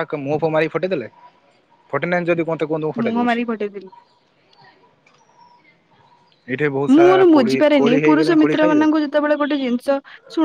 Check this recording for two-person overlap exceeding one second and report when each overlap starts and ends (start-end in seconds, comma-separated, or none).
6.9-8.9